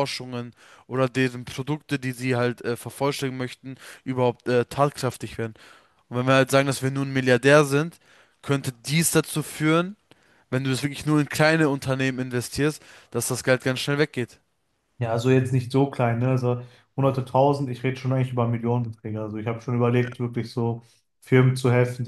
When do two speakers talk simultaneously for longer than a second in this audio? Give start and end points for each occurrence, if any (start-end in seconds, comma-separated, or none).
none